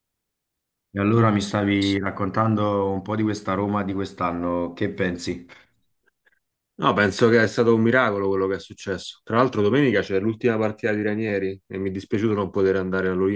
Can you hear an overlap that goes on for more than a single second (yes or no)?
no